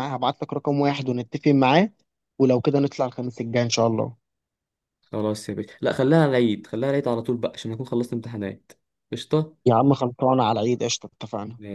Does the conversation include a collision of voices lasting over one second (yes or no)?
no